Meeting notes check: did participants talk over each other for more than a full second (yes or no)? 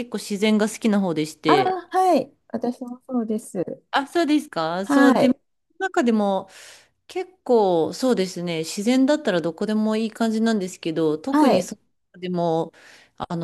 no